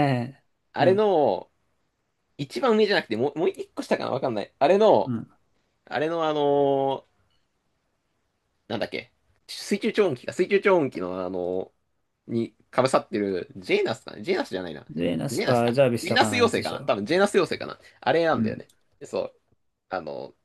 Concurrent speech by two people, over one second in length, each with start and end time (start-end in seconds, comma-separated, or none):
15.3-16.9